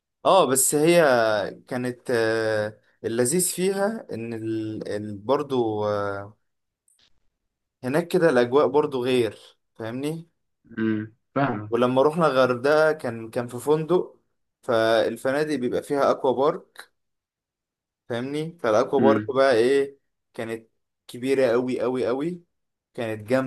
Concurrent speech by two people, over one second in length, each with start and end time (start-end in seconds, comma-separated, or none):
none